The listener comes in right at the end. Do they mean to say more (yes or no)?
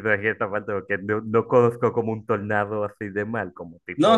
yes